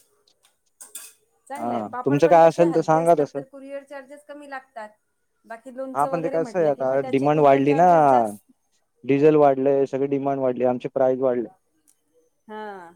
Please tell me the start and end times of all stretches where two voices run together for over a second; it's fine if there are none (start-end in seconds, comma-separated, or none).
1.6-3.4, 5.9-7.8